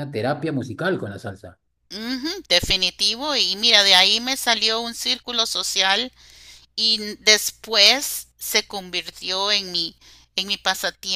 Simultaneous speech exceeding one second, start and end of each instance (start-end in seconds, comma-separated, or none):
none